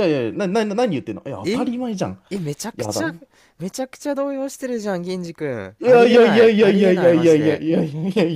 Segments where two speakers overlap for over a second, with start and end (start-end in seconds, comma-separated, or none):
5.8-7.7